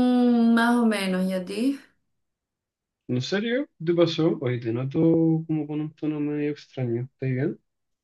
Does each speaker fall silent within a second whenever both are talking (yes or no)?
yes